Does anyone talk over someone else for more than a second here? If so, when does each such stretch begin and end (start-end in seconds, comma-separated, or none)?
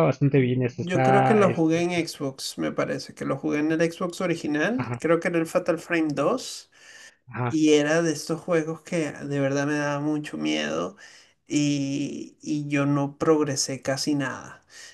0.8-2.1